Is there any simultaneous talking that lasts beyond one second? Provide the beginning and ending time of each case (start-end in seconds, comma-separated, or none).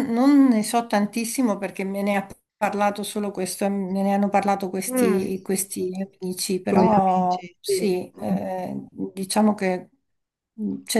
6.7-8.3